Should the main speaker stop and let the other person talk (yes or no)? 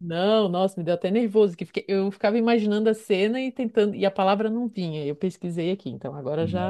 yes